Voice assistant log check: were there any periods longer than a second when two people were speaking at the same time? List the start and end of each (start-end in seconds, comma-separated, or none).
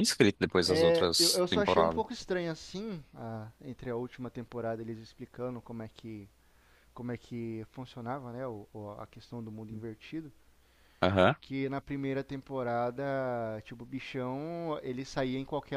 0.7-2.0